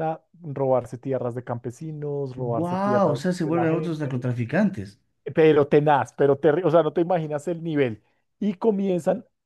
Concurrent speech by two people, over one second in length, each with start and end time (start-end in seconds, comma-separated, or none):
2.6-4.3